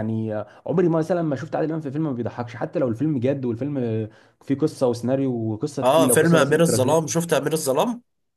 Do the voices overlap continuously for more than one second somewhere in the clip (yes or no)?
yes